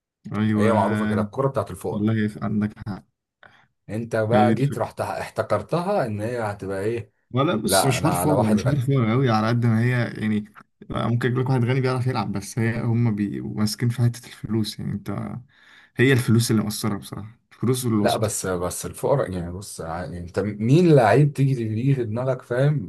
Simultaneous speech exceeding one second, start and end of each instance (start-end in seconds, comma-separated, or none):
7.6-8.9